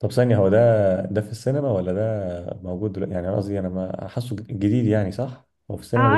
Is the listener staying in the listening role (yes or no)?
no